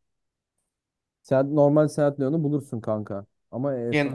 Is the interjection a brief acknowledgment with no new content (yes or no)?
no